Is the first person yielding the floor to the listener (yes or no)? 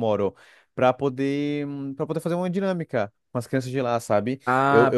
yes